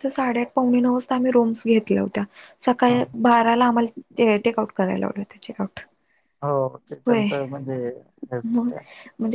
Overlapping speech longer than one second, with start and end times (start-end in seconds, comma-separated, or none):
none